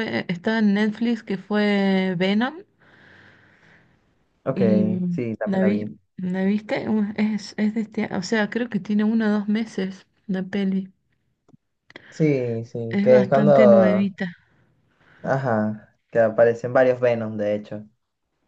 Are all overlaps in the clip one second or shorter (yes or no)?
no